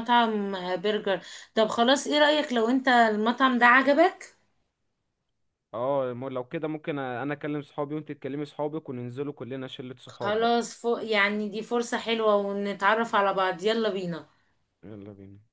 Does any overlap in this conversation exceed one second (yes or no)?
no